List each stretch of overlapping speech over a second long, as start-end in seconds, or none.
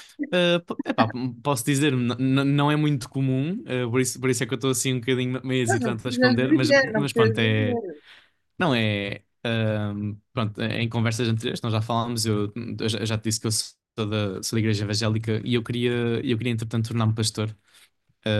5.9-7.8